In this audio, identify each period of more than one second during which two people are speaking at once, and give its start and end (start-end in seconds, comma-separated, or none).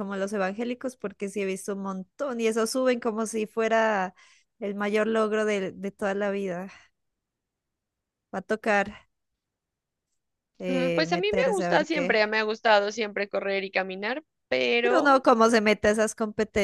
10.7-12.2